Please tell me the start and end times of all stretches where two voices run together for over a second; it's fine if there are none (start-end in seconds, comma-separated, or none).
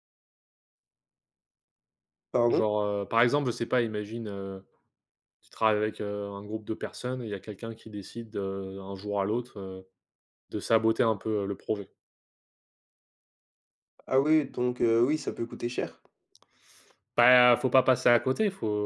none